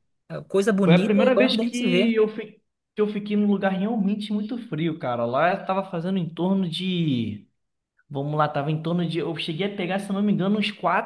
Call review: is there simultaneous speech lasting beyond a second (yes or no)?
yes